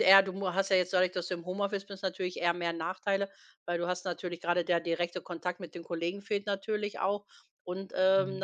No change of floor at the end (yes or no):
yes